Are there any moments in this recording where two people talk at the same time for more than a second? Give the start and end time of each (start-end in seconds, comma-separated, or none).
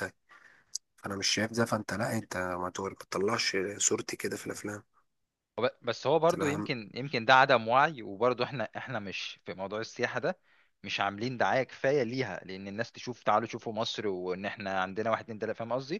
none